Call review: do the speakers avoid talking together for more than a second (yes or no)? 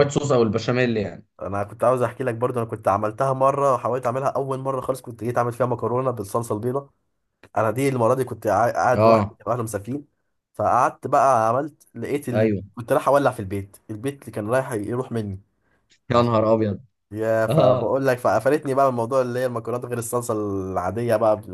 yes